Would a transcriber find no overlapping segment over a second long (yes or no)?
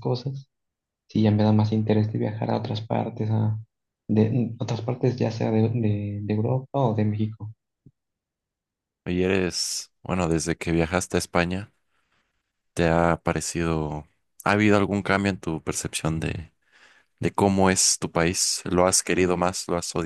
yes